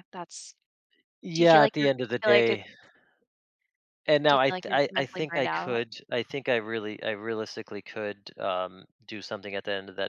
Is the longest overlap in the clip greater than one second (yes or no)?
yes